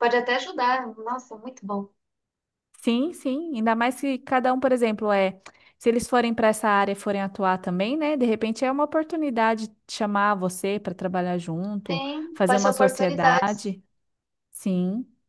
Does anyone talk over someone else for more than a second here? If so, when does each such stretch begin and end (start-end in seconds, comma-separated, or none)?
11.8-13.7